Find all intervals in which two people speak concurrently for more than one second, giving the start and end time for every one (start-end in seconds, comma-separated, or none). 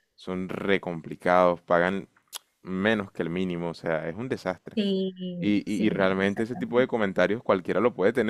5.4-6.9